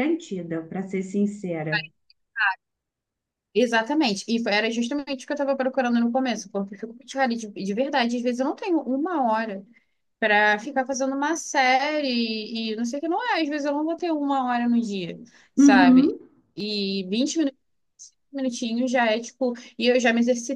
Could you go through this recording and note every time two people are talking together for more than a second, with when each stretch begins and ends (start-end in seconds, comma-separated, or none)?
none